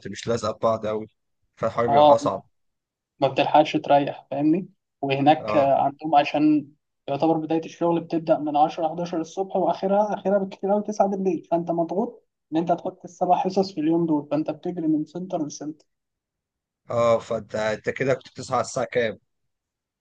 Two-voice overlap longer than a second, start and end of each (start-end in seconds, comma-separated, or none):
none